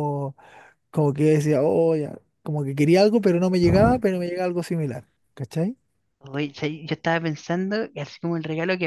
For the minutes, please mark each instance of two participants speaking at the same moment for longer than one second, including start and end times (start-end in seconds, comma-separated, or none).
none